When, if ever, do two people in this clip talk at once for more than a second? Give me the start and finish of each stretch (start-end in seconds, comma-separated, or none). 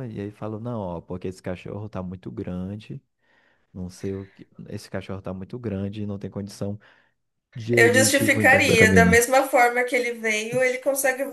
7.7-9.2